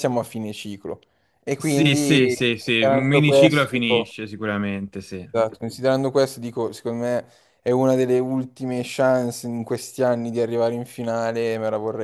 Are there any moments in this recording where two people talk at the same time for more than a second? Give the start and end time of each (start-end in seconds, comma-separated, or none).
1.6-4.2